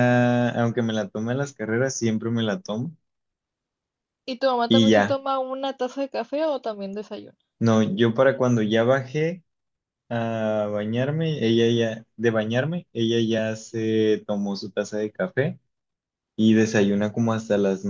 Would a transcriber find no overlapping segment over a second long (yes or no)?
yes